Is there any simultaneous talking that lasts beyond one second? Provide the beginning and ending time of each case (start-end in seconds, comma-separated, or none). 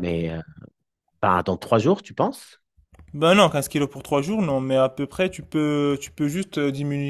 none